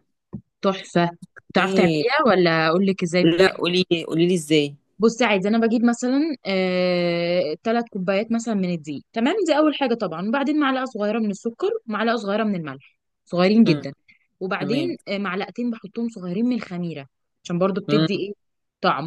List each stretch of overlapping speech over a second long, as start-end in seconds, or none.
none